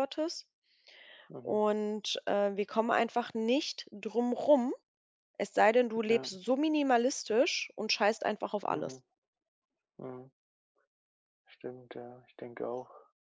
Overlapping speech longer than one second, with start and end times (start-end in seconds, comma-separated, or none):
none